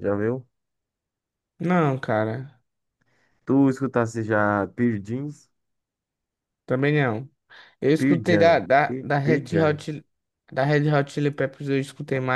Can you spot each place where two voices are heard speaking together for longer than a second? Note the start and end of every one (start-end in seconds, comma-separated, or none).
8.0-9.8